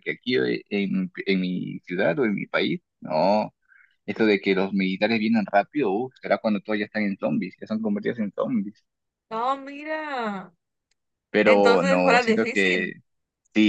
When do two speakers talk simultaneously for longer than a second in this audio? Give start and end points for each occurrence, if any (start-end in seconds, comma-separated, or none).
11.4-12.9